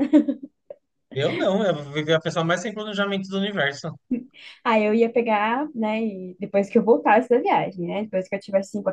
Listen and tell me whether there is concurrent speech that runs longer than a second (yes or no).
no